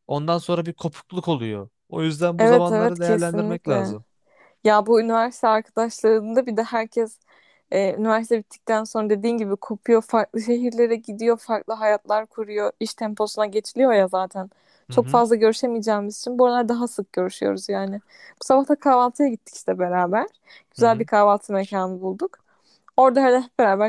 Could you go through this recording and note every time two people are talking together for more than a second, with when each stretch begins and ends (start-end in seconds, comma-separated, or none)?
2.4-4.0